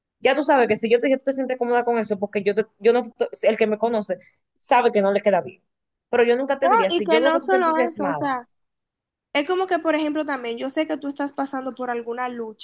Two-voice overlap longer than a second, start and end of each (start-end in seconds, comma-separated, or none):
6.6-8.3